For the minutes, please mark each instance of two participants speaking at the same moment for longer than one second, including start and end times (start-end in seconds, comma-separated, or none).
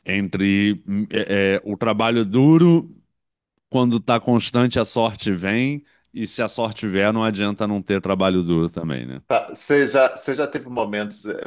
none